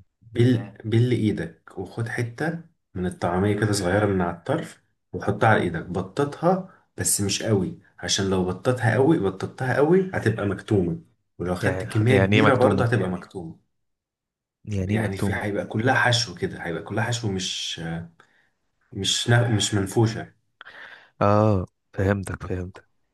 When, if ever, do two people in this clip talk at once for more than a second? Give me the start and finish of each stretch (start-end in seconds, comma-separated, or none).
11.6-12.9